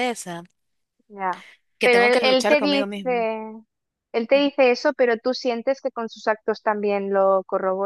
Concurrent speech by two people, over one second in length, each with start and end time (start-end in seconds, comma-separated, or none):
1.8-3.2